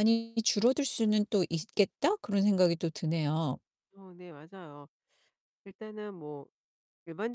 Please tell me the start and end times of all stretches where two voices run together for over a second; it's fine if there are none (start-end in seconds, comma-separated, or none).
none